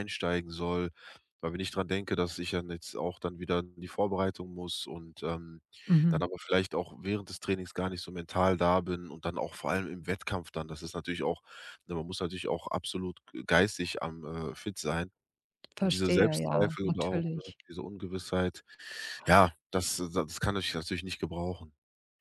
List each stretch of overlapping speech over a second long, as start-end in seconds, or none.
15.8-17.6